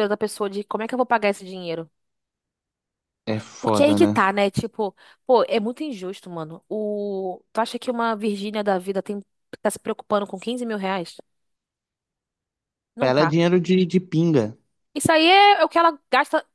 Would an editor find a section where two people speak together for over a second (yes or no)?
no